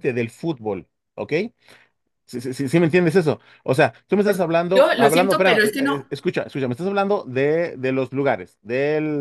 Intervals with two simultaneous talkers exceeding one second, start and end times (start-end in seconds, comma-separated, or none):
4.2-6.0